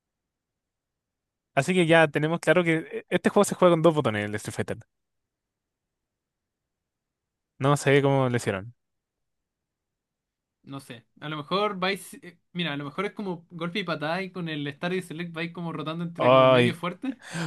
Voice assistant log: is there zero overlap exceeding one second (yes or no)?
yes